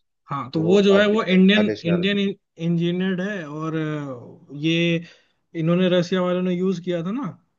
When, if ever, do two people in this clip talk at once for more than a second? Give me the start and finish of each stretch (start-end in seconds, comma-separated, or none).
0.6-2.1